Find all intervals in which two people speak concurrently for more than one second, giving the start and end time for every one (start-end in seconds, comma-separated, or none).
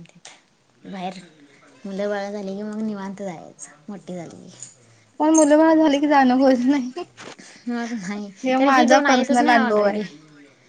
8.4-10.0